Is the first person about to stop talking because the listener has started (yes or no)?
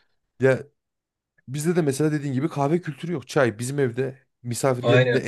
no